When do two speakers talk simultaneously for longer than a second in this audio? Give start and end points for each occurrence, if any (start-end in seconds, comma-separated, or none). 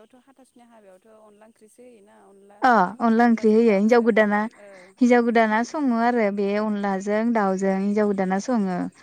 none